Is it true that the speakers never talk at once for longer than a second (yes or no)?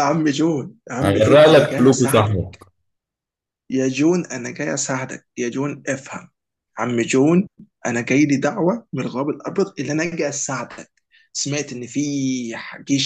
no